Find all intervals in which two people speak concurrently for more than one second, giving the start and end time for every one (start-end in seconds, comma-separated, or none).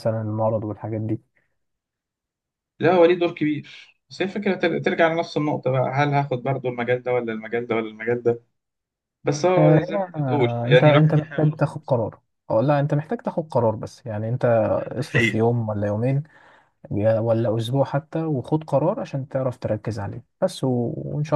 9.6-12.0